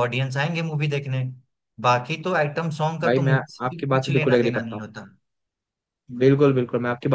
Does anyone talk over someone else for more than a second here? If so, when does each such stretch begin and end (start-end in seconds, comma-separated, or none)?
3.0-4.8